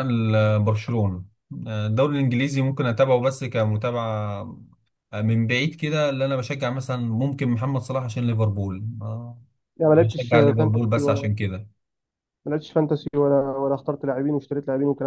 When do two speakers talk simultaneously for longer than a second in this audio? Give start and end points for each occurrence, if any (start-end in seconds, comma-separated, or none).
9.9-11.3